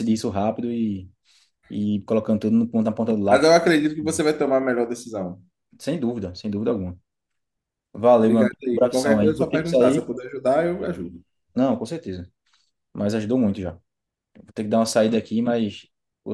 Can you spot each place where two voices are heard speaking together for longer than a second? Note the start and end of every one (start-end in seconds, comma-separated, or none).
8.2-10.1